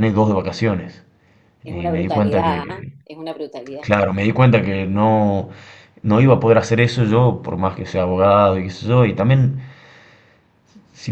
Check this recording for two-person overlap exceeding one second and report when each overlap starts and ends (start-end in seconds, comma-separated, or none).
1.6-2.9